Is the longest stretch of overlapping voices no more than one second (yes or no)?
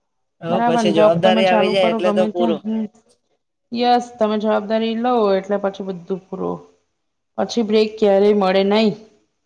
no